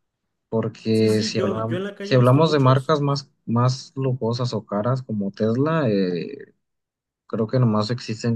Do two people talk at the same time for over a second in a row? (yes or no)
yes